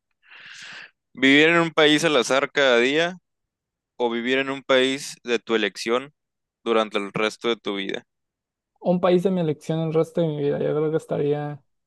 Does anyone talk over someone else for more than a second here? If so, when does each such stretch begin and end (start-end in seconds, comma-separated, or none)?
none